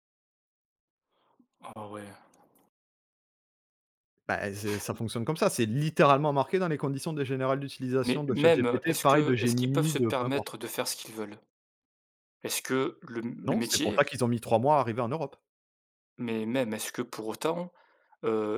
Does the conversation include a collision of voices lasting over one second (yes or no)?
yes